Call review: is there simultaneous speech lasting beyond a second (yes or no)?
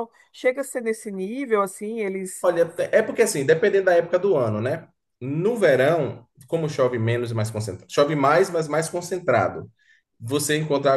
no